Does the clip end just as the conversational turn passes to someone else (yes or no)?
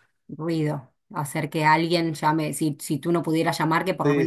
yes